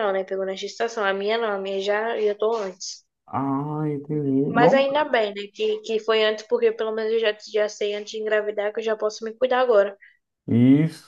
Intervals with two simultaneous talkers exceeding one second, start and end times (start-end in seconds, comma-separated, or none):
none